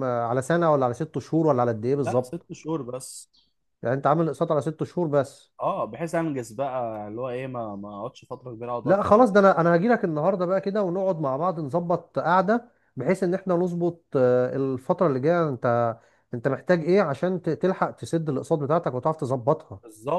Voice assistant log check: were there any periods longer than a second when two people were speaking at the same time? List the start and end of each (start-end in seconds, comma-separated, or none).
none